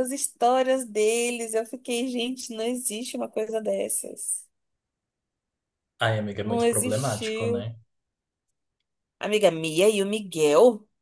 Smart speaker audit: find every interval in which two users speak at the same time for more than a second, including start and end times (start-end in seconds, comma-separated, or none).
6.4-7.7